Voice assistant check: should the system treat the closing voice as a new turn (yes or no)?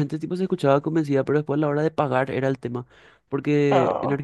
no